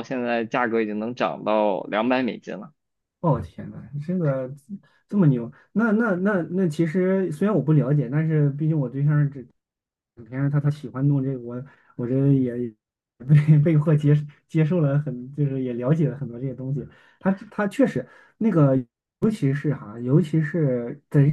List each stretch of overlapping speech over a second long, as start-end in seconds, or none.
none